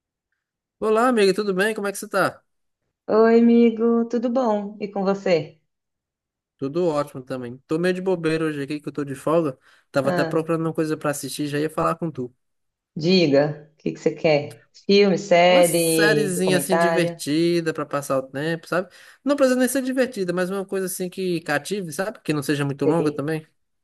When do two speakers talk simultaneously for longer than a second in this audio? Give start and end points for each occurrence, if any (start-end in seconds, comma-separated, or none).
15.5-17.2